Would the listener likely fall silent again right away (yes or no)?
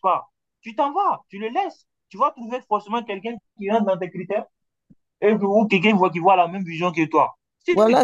no